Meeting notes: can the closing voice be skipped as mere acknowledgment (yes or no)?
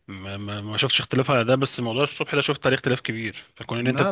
no